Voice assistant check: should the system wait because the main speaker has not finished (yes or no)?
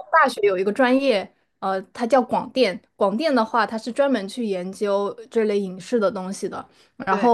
yes